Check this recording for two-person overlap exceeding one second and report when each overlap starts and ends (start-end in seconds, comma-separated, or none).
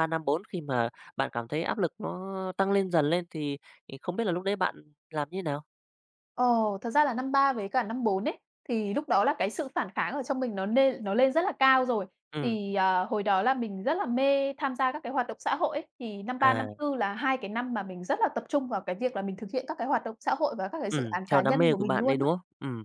20.9-22.3